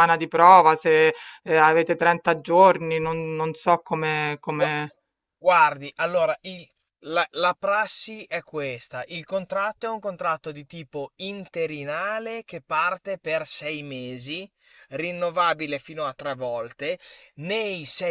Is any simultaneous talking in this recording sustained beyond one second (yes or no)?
no